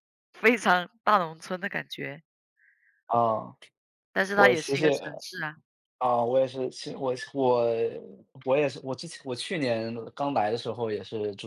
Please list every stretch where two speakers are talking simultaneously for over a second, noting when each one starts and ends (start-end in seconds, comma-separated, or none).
none